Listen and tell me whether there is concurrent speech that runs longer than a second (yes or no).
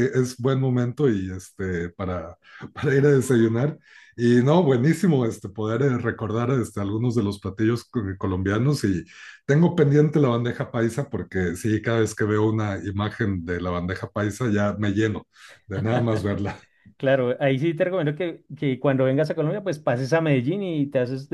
no